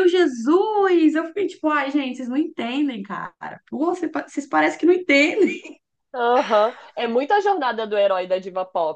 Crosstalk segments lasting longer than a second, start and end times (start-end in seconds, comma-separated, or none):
none